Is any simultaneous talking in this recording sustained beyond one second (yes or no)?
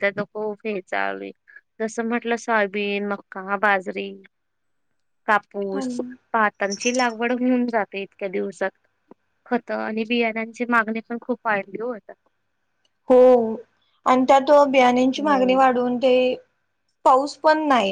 no